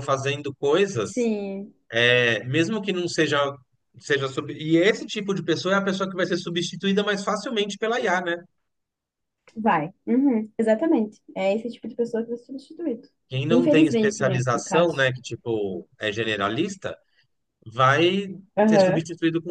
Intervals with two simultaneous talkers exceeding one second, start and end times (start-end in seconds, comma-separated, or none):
13.5-15.1